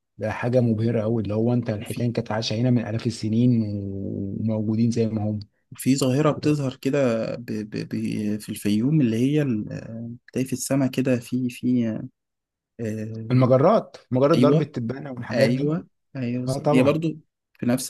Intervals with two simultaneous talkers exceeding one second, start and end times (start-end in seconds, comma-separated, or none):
none